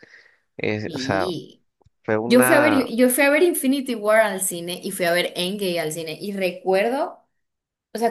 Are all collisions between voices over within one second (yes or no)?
yes